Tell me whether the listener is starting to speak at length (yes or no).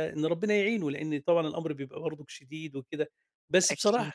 no